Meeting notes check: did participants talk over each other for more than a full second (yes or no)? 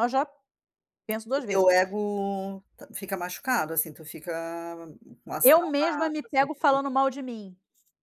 yes